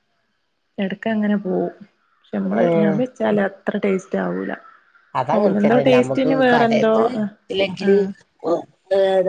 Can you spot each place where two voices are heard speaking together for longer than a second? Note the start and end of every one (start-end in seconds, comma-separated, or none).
5.4-7.0